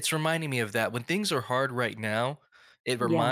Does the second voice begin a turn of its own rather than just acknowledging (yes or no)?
no